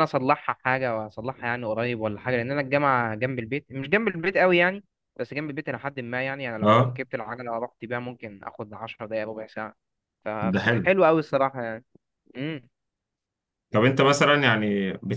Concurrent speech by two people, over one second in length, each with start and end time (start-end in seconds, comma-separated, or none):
none